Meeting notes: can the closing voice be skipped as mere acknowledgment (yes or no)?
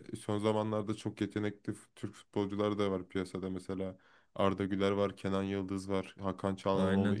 yes